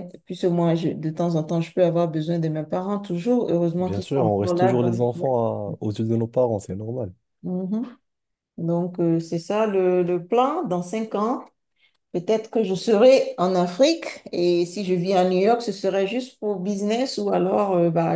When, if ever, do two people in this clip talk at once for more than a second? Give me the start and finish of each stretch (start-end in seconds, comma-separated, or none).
3.8-5.3